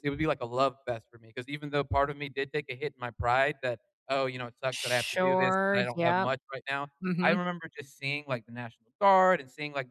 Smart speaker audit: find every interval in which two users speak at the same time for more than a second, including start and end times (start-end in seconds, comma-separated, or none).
4.7-6.3